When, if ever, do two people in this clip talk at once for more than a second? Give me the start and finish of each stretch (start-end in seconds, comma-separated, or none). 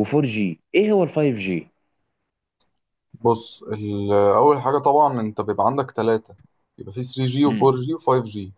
none